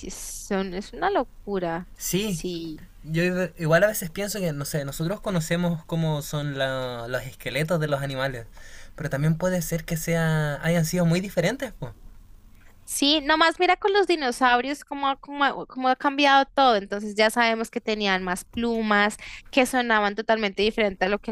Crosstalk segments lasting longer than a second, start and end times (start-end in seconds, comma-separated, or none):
none